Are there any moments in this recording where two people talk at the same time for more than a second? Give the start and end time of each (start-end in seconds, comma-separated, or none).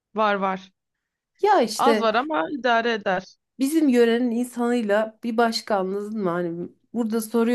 none